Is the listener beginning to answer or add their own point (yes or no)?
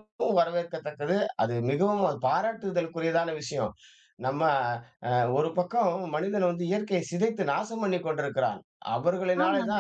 no